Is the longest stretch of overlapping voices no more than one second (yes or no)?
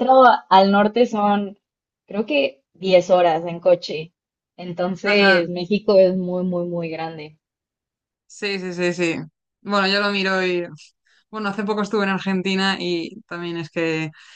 yes